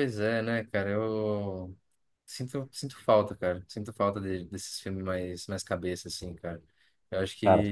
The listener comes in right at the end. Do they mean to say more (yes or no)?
no